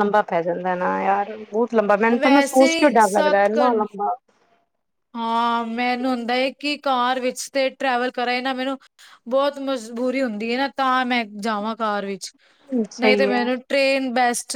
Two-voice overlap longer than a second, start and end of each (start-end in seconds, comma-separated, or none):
2.1-3.8